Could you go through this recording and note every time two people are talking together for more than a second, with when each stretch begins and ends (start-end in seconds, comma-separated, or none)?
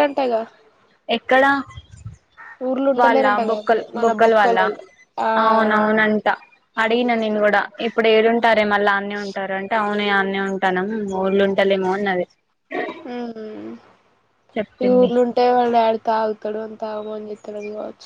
3.0-4.7